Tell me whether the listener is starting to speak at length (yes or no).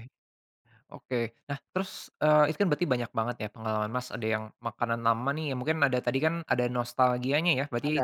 no